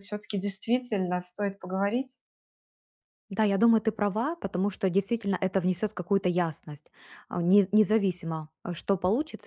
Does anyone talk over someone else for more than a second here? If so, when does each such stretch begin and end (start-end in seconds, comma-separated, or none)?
none